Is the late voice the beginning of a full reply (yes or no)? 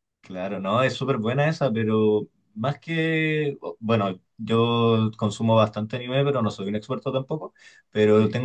no